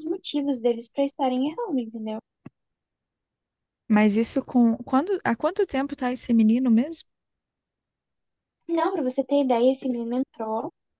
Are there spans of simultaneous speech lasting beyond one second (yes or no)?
no